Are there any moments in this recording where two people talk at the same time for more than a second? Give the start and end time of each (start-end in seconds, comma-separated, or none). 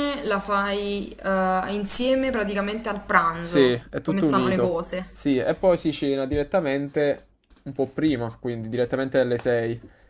3.4-5.1